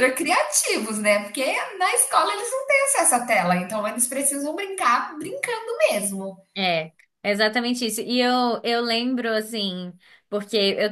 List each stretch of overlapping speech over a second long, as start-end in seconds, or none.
none